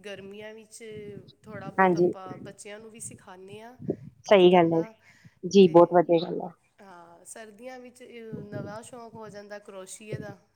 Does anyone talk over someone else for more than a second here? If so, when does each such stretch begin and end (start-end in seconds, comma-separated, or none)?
none